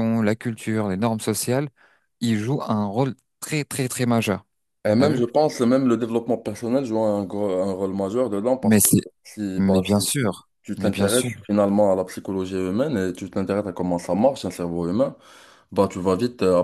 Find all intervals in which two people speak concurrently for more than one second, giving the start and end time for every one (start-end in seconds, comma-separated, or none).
9.6-11.3